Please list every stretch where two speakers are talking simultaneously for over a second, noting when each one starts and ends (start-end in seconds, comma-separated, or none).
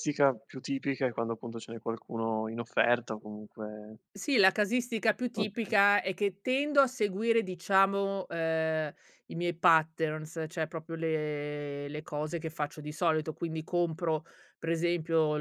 none